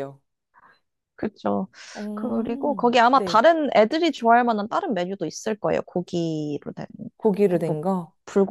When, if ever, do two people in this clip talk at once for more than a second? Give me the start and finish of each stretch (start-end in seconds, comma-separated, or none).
2.1-3.4